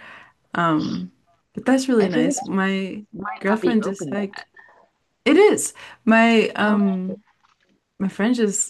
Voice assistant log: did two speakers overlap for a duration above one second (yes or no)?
yes